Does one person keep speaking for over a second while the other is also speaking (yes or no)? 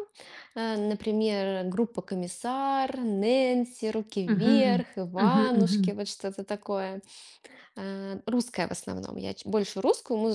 yes